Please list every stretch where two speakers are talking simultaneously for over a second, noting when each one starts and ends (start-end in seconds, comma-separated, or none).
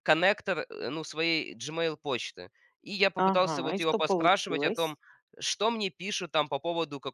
3.2-5.0